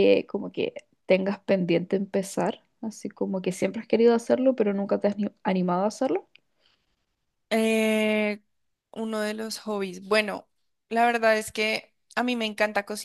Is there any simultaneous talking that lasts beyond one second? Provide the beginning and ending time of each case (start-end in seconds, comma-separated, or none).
none